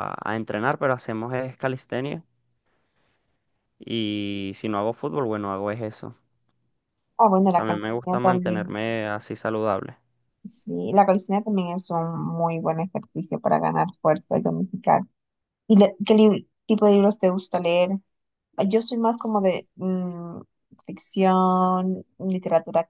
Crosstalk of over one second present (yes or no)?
yes